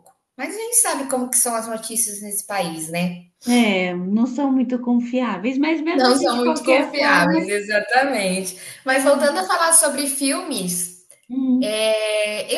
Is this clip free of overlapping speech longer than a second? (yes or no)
no